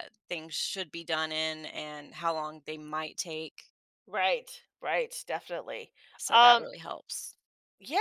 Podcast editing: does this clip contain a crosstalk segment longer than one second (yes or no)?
no